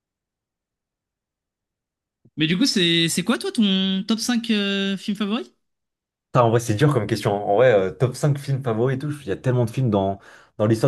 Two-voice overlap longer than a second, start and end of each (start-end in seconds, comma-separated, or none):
none